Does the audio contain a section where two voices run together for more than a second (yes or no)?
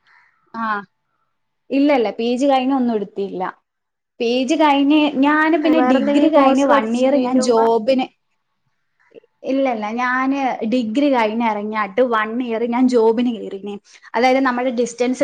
yes